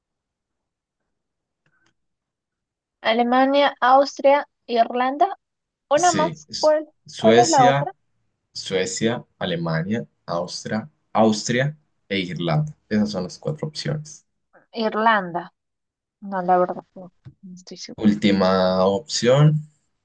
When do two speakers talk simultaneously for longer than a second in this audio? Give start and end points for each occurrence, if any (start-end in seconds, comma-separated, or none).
6.0-7.9